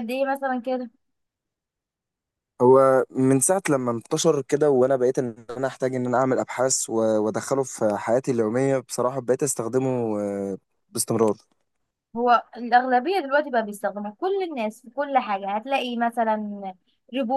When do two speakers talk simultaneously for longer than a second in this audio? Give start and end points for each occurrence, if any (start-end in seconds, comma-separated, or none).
none